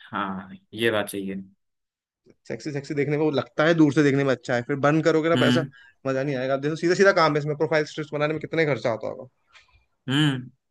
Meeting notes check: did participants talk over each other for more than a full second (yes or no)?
no